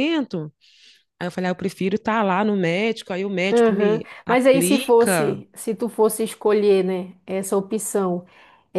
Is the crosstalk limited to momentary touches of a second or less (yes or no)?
no